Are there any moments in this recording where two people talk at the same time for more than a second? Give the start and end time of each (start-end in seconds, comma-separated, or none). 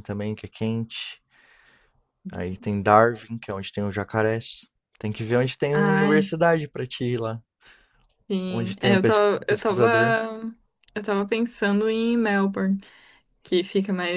8.5-10.2